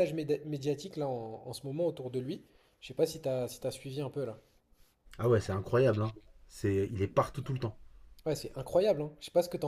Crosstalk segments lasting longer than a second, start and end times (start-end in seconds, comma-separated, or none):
none